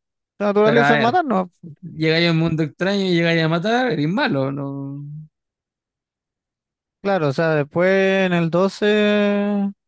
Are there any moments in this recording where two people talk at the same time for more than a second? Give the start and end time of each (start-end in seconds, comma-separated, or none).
none